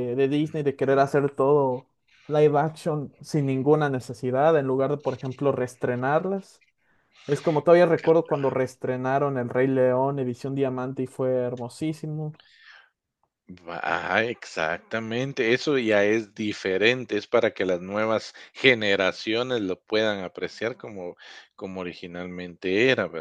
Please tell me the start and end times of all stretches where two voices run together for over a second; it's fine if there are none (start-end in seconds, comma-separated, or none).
none